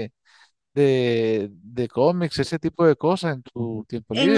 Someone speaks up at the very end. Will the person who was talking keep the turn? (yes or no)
no